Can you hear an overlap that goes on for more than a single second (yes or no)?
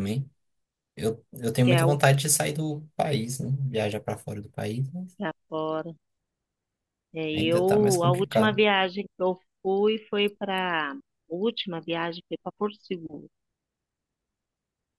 yes